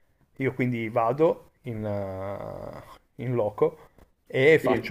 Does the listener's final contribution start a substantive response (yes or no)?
no